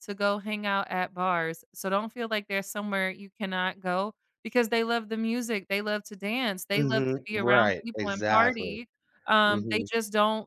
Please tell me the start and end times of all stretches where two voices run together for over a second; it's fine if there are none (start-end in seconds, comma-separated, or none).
6.7-8.8